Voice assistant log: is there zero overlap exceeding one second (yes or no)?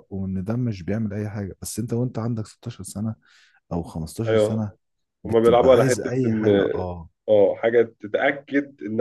no